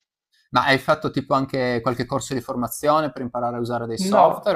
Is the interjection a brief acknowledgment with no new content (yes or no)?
no